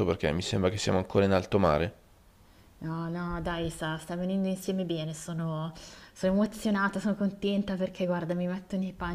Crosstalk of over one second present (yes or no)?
no